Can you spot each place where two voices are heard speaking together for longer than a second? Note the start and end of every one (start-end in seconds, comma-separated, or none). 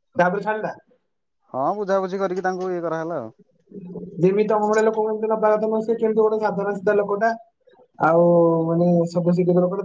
none